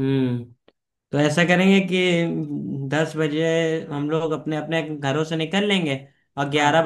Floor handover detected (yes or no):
no